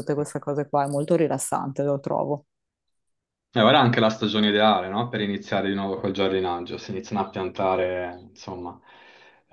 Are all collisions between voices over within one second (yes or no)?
yes